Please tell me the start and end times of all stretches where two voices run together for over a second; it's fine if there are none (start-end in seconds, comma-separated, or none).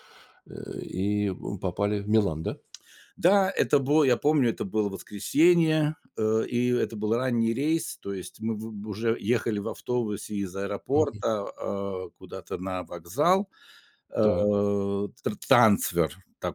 none